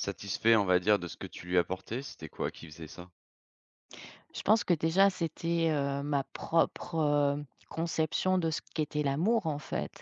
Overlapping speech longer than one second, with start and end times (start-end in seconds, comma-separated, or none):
none